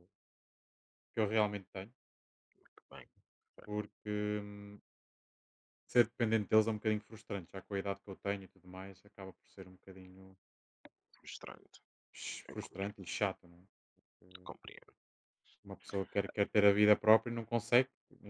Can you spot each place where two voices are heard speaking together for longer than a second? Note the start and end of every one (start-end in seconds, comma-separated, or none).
none